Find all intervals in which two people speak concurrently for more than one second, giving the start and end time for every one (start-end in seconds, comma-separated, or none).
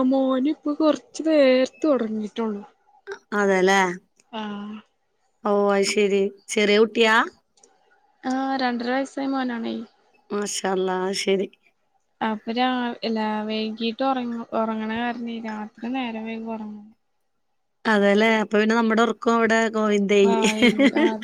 none